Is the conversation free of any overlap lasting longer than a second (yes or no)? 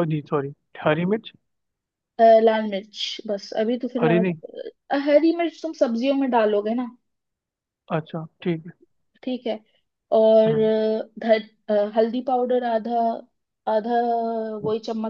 yes